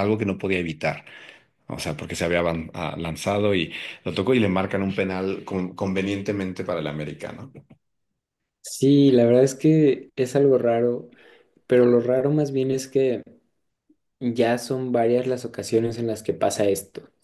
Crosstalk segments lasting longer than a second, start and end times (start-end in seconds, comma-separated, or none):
none